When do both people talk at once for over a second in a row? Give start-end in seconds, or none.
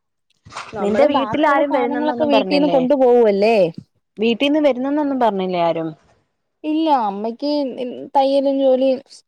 0.8-2.3